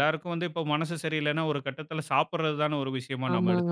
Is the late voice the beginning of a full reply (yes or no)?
yes